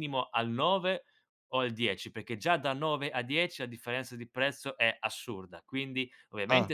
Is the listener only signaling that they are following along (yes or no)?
yes